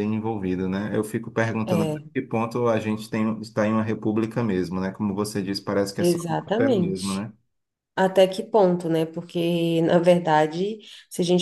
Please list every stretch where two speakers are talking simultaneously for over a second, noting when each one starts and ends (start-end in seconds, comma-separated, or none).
6.0-7.2